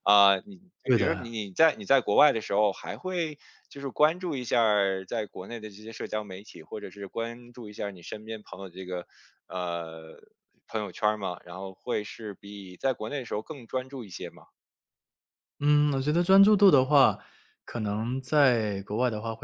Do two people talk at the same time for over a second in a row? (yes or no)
no